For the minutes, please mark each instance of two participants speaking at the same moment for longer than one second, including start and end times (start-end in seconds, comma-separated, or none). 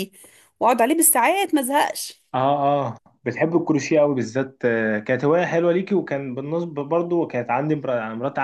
none